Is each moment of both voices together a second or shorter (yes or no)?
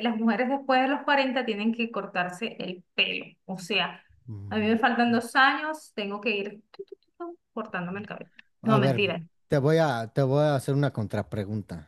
yes